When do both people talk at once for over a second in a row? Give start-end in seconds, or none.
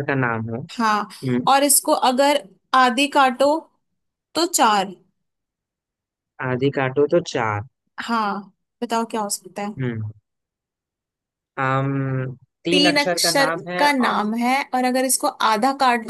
12.7-14.2